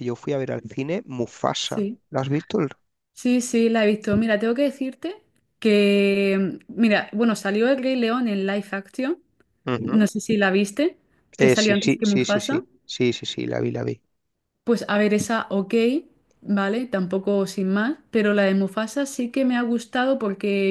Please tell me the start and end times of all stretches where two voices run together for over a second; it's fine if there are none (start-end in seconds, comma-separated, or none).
11.4-12.6